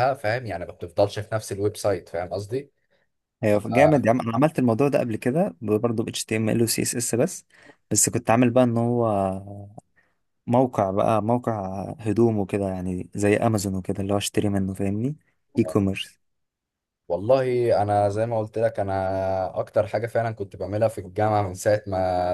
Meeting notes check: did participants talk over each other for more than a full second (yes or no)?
no